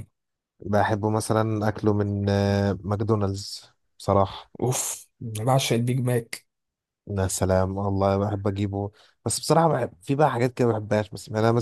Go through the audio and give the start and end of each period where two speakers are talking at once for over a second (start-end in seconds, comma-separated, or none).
none